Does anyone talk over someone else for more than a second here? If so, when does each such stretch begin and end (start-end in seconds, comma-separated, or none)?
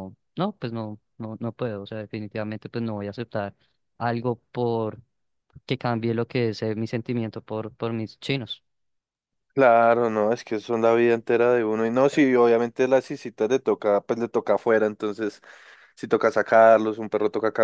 none